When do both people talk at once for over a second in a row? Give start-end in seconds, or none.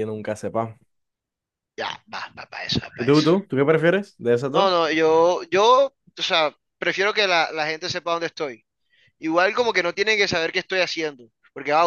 none